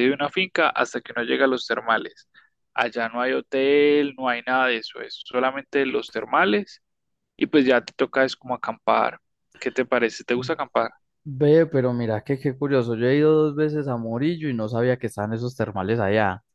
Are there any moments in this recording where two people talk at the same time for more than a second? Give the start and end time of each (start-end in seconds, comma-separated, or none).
none